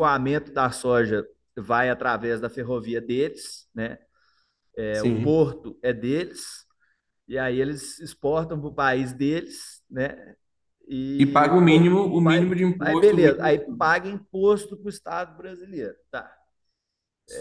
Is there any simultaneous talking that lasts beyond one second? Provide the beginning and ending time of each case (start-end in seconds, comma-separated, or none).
11.2-13.9